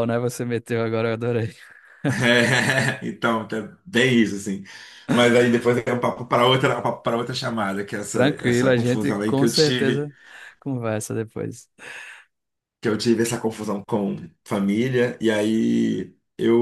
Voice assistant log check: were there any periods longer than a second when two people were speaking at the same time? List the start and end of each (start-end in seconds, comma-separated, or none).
8.1-10.1